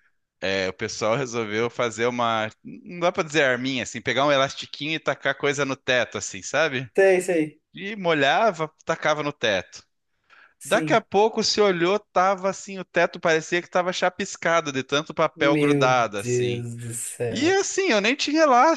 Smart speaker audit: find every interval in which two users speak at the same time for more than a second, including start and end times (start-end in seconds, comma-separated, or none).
15.4-16.7